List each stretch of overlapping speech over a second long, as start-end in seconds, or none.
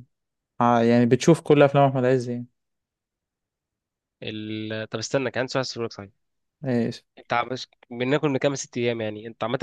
none